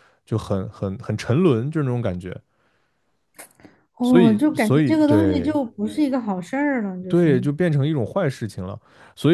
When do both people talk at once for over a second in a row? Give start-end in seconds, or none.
4.0-5.6